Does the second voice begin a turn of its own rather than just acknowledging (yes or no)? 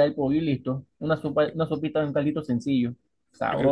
yes